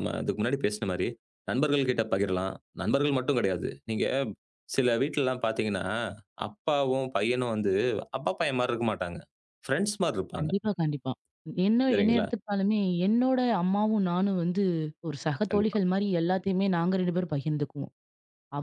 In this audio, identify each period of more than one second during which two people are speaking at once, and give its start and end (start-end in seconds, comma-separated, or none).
none